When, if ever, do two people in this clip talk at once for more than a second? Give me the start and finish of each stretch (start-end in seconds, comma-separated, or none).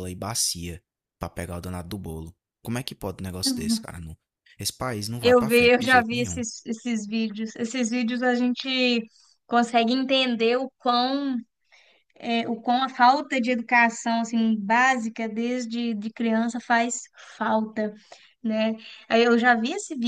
5.2-6.4